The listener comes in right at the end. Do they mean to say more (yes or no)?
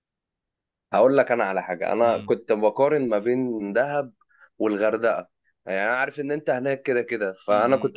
no